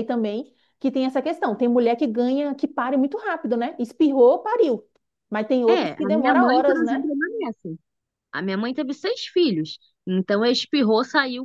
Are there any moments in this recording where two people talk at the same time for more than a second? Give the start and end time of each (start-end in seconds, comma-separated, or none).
5.7-7.0